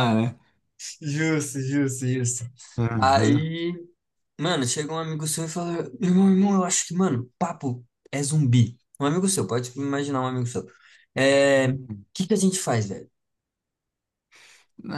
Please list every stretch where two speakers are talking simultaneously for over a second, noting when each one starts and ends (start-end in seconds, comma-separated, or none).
none